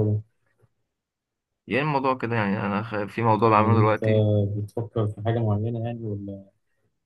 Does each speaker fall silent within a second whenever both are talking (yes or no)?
yes